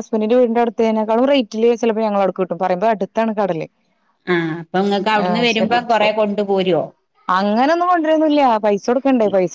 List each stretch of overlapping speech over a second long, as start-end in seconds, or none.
none